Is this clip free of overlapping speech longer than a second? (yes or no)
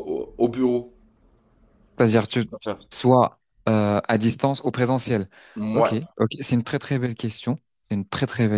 yes